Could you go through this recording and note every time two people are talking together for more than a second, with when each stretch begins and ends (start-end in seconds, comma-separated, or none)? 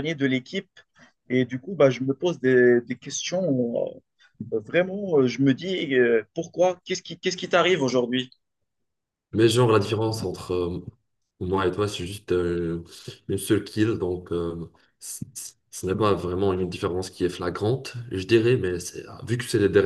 none